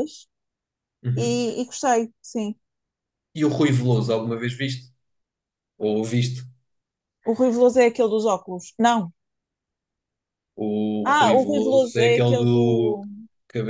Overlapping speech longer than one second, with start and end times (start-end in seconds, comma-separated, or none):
11.0-13.0